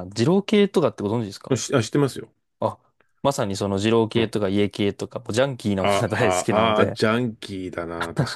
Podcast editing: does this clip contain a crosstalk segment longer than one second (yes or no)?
yes